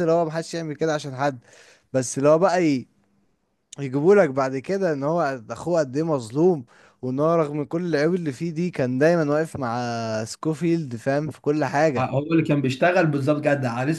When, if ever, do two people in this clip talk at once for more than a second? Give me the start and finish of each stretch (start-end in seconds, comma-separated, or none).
none